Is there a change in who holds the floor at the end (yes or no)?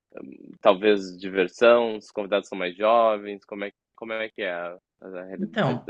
yes